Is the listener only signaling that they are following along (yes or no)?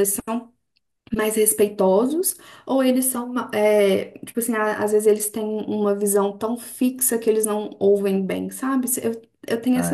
no